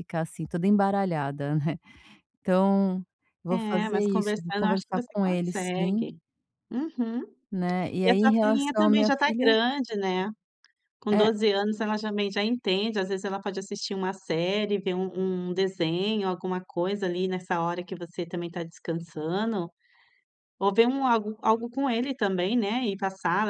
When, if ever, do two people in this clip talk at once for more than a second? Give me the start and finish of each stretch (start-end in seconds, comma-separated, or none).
3.5-6.0, 8.0-9.6